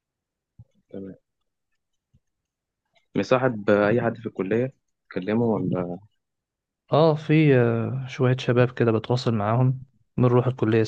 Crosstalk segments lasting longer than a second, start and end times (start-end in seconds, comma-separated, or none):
none